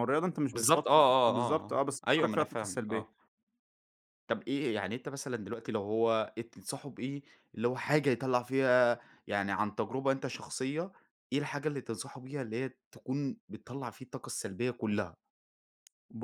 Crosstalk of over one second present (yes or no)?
yes